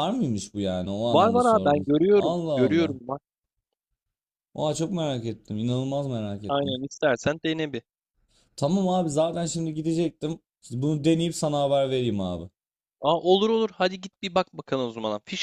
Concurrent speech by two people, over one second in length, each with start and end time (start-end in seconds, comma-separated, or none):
1.1-3.0